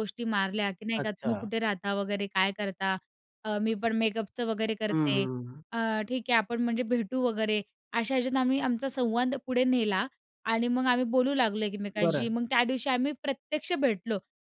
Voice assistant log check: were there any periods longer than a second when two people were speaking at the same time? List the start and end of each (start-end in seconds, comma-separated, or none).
none